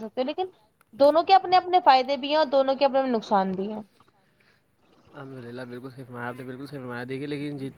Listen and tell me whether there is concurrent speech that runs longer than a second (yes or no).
no